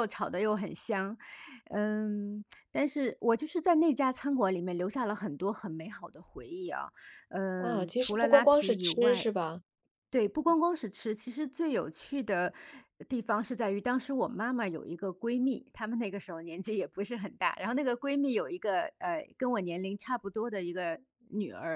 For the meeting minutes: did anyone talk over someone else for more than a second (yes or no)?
yes